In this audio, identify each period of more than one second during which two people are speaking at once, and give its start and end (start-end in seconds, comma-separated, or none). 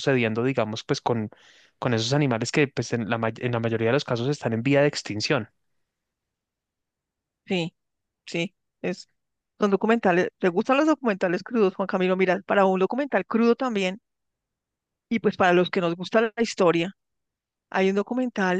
none